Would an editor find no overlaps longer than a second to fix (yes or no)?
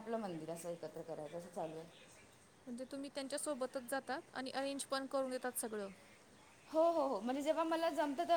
yes